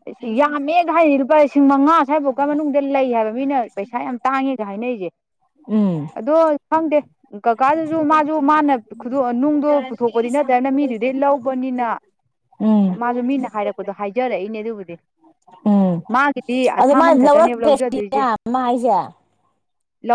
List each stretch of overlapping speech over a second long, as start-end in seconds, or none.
16.8-18.2